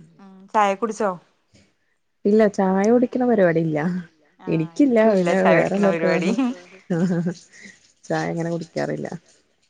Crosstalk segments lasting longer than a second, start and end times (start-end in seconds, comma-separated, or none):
4.5-6.3